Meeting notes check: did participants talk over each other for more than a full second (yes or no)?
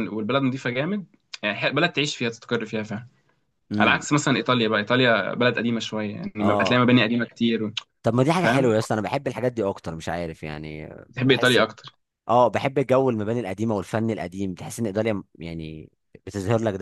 no